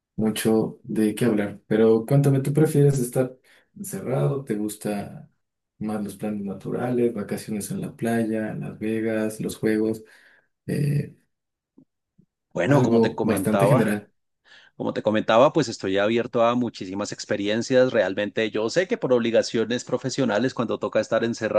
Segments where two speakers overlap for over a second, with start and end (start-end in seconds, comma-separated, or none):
12.7-13.9